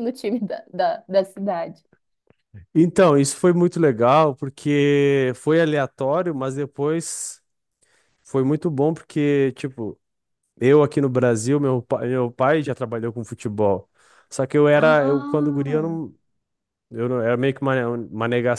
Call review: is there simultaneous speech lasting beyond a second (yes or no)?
yes